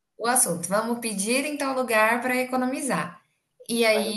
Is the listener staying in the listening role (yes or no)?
yes